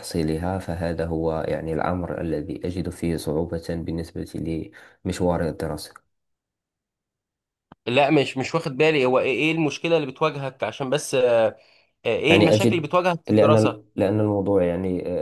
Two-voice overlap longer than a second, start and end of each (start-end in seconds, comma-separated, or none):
12.3-13.8